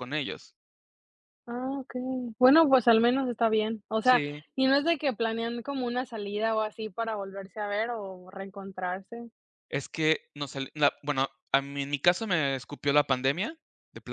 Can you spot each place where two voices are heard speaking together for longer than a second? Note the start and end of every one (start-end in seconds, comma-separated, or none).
none